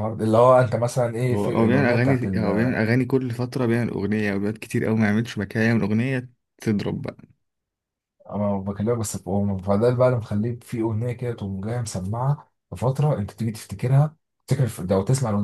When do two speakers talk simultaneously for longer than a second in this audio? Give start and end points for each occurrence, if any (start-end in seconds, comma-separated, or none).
1.3-2.8